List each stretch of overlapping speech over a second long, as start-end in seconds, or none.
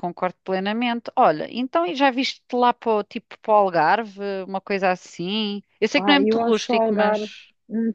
6.0-7.3